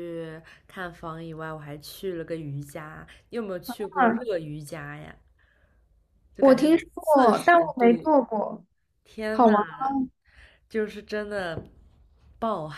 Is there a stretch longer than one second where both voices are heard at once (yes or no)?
yes